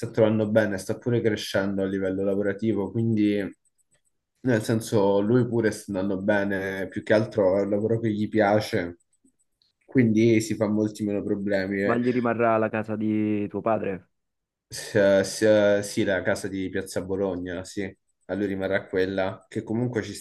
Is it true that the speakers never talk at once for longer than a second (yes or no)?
yes